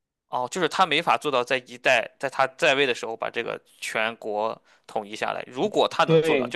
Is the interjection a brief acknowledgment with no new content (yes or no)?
yes